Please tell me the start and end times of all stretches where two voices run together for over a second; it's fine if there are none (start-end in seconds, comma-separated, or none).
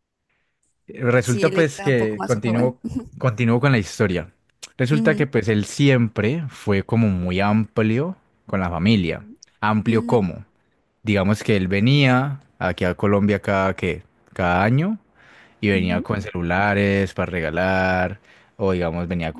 1.2-2.8